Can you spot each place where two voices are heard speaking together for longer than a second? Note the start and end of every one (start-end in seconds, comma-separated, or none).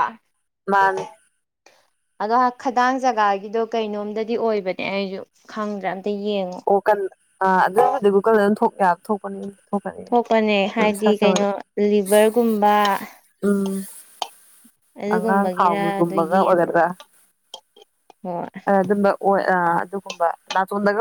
15.2-16.7